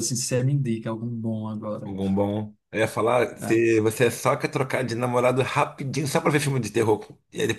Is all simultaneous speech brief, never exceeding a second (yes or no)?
yes